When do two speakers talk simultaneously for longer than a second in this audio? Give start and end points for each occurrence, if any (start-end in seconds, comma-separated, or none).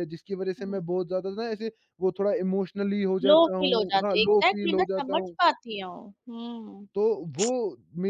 3.3-5.4